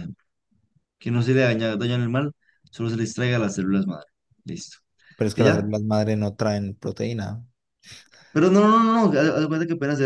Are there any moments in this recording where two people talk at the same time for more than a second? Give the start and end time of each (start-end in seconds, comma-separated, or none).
none